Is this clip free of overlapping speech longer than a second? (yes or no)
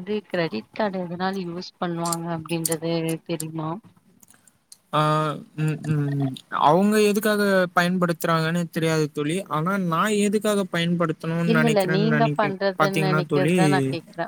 no